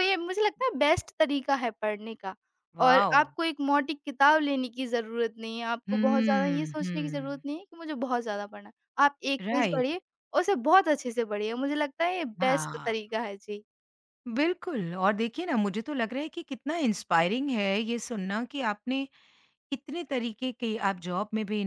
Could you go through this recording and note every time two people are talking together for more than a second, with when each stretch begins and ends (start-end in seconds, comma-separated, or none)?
5.9-7.4